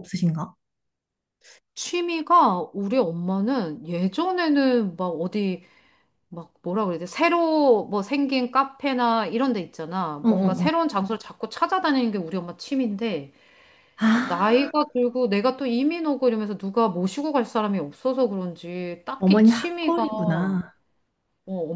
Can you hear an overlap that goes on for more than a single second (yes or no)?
yes